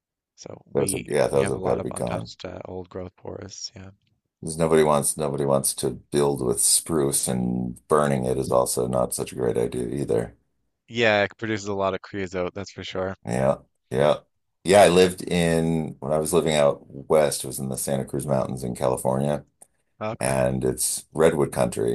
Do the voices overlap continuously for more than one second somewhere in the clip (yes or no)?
yes